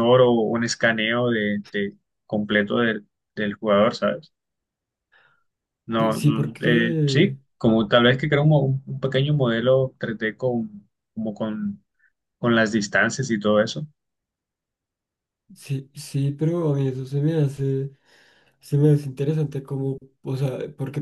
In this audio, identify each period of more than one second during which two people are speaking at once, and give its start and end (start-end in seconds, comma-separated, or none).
6.0-7.3